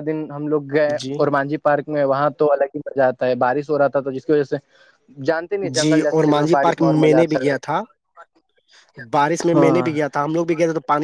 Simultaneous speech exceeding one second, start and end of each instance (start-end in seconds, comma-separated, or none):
5.8-7.5